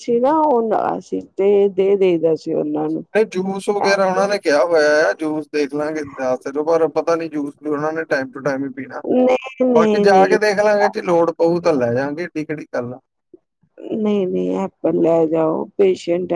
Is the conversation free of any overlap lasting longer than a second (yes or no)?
yes